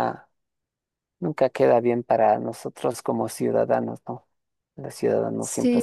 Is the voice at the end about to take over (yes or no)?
no